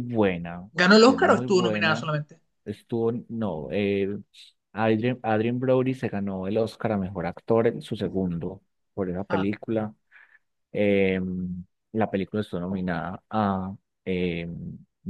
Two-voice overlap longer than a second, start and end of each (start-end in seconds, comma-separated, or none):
0.7-2.1